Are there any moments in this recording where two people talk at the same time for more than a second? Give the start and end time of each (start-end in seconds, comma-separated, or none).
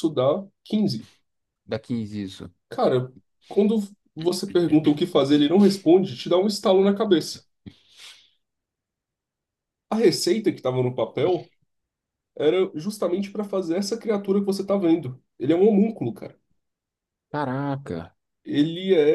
none